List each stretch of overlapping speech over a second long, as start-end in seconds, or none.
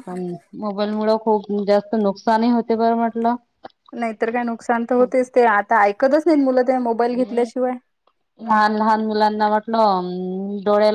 none